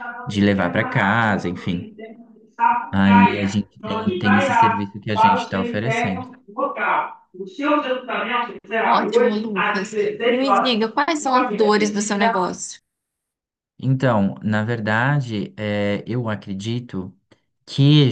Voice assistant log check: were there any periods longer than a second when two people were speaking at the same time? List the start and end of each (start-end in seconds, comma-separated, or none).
0.5-1.9, 2.9-6.3